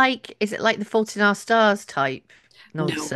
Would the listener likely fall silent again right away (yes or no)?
no